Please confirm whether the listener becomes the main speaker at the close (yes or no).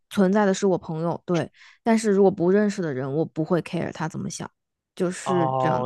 yes